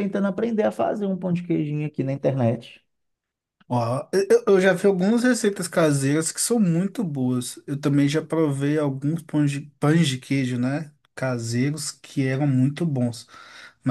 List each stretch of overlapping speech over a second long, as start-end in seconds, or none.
none